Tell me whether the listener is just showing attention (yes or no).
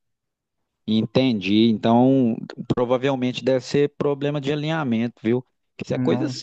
yes